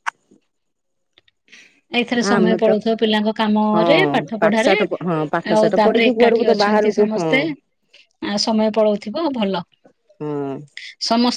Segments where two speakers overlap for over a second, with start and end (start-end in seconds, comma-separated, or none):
5.6-7.3